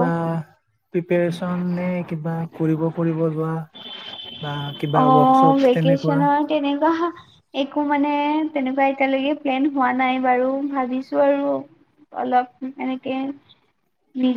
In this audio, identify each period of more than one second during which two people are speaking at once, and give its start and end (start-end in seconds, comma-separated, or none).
4.9-6.3